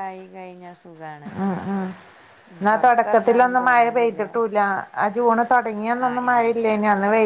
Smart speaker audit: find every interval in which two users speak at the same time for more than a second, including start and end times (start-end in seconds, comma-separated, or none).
2.6-4.2